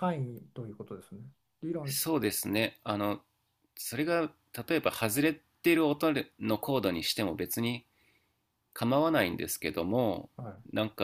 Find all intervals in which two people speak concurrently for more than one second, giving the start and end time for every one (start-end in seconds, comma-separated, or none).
none